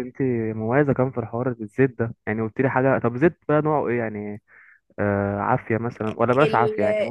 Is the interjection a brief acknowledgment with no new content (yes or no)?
no